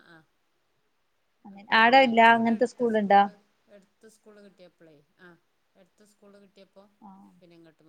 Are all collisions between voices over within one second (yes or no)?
no